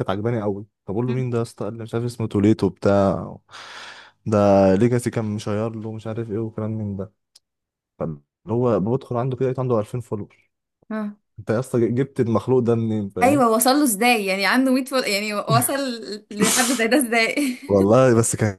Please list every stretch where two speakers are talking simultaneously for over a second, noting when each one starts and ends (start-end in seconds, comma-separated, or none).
none